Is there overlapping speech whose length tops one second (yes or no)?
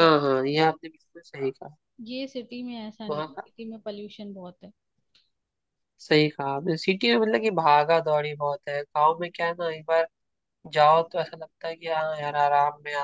no